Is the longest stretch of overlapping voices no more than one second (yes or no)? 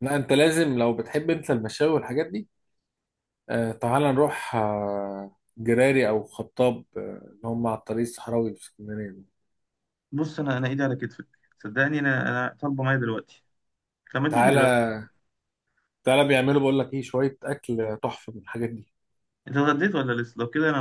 yes